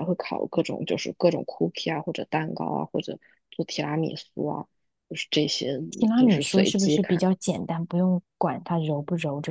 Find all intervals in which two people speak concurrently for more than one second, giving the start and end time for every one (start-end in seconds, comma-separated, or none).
5.9-7.2